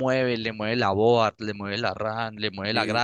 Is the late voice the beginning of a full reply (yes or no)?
no